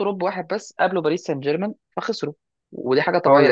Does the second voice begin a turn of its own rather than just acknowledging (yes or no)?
no